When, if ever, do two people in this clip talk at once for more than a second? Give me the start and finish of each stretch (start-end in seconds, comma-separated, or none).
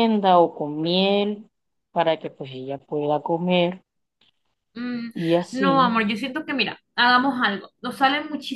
none